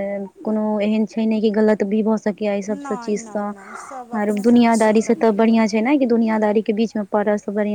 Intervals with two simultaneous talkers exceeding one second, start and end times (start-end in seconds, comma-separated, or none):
2.7-5.7